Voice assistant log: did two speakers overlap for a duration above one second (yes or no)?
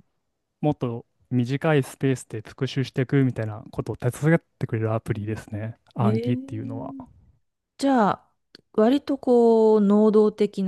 no